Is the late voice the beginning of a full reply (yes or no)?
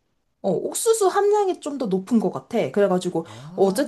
no